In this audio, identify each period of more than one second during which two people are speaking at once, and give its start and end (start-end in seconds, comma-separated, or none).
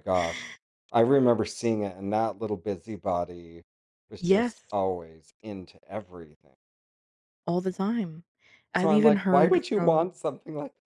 8.8-10.1